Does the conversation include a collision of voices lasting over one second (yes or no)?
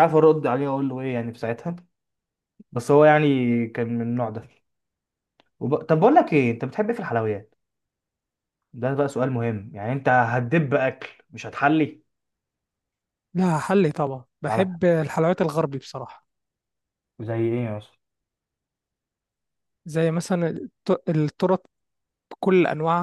no